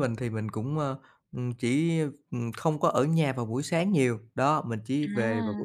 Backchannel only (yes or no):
yes